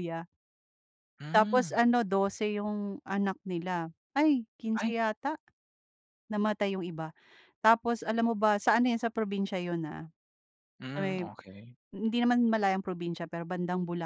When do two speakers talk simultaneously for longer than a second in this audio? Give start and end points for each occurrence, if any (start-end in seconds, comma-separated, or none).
none